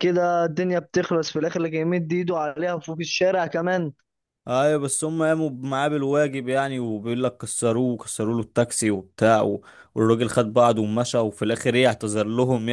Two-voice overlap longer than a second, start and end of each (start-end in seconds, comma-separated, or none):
none